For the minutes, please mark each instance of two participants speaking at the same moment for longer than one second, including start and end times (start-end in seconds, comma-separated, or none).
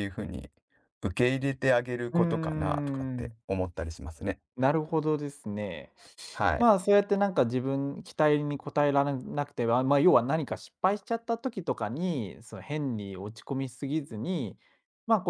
2.1-3.4